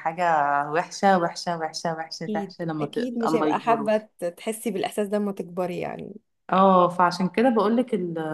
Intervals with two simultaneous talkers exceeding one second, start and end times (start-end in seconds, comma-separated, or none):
2.2-3.9